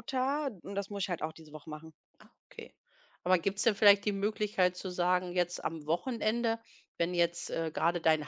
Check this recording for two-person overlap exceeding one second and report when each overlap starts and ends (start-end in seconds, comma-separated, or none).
none